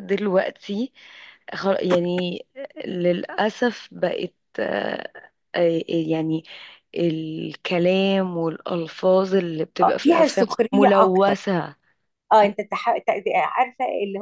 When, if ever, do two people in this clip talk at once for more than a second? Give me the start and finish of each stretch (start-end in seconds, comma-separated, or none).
9.8-11.3